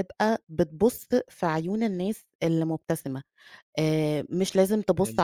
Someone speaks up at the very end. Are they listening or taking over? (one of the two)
listening